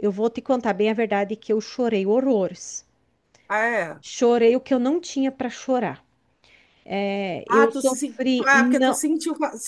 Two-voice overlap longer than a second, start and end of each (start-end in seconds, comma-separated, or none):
7.5-9.0